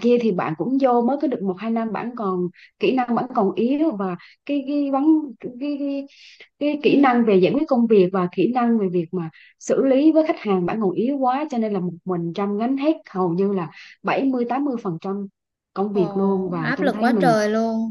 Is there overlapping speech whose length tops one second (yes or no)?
yes